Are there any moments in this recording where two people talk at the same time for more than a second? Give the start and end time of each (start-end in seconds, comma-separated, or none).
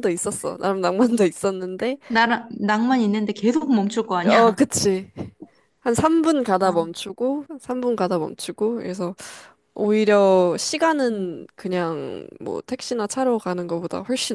none